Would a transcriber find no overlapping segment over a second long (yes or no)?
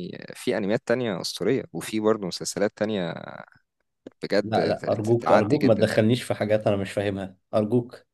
no